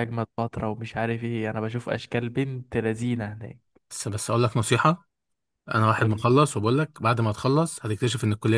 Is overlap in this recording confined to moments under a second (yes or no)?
yes